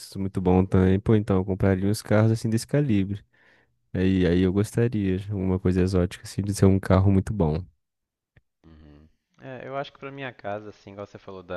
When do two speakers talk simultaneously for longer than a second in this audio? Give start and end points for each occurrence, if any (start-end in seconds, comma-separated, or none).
none